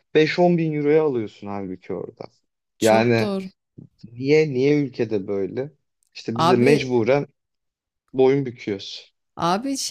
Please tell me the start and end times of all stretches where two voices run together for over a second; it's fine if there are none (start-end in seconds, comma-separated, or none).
none